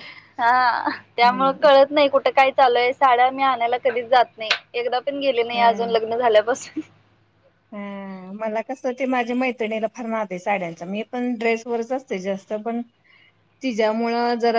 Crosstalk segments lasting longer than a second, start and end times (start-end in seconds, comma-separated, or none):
none